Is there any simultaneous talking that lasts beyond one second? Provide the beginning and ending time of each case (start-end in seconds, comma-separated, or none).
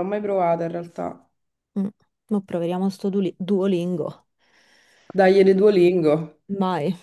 none